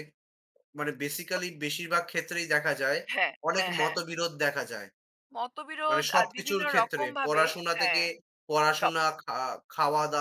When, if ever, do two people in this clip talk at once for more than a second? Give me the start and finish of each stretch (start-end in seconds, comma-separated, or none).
5.9-8.0